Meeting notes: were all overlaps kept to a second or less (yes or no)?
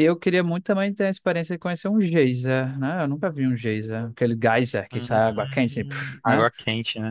no